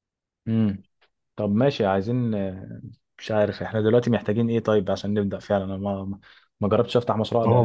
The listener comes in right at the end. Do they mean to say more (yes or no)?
no